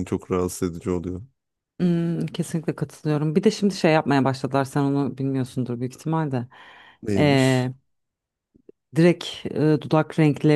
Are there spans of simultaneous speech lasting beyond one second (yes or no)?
no